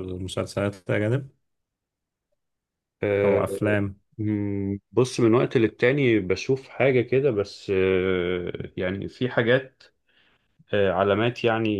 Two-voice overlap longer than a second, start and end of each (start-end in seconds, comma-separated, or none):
none